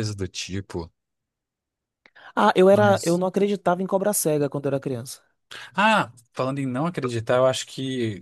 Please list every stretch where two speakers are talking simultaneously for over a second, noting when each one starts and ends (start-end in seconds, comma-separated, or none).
none